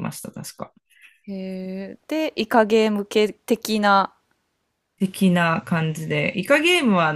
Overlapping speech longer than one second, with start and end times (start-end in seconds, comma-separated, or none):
none